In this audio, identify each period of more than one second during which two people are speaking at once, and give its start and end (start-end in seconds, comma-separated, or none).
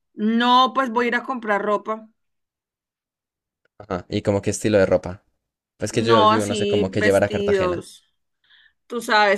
5.9-7.9